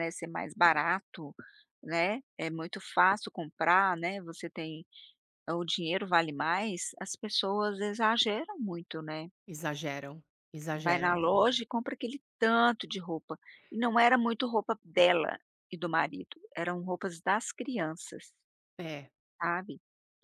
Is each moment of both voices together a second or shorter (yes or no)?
yes